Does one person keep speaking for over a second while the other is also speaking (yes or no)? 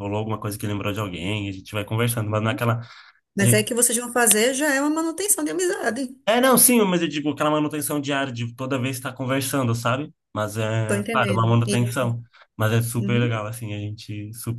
yes